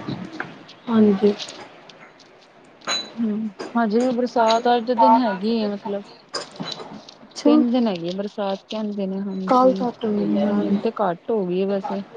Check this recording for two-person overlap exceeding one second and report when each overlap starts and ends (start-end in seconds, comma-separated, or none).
9.5-10.8